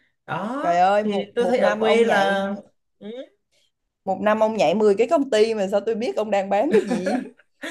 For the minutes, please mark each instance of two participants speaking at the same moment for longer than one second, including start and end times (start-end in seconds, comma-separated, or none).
1.0-2.5